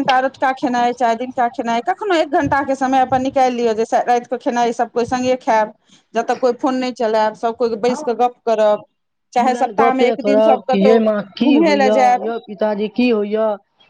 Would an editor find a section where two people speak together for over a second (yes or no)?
yes